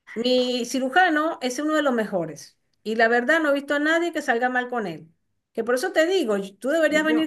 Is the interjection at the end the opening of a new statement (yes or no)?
no